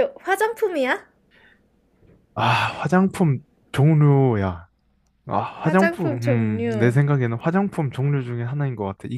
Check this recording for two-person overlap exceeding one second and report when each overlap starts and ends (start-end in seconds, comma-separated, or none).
5.6-7.0